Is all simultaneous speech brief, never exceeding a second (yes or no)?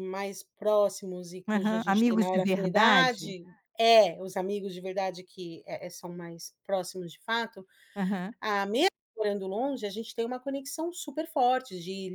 no